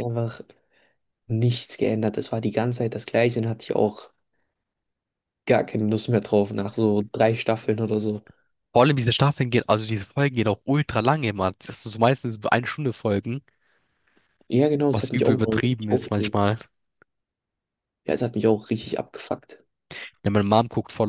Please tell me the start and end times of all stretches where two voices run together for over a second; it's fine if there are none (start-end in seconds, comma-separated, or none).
14.9-16.4